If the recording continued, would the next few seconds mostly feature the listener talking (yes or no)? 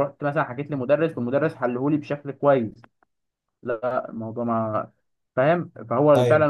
no